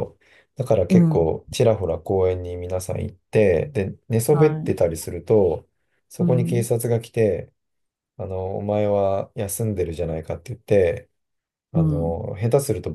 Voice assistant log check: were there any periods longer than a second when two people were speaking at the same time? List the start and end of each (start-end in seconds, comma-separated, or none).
none